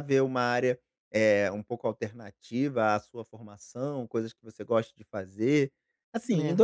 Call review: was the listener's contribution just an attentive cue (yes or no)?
yes